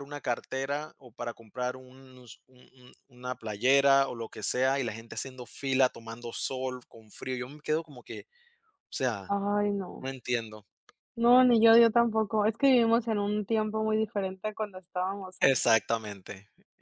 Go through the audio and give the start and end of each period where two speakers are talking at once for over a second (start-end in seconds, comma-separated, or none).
none